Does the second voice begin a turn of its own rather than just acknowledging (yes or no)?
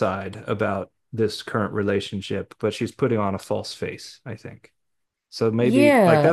yes